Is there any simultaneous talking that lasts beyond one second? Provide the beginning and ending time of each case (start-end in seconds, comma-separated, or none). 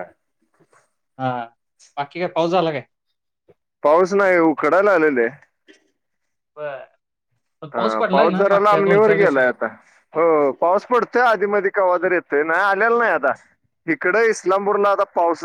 none